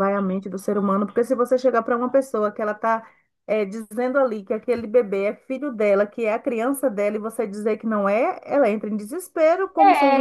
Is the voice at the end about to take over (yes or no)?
yes